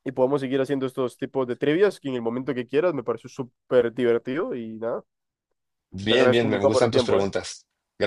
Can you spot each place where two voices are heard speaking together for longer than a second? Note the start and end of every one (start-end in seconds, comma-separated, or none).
6.1-7.3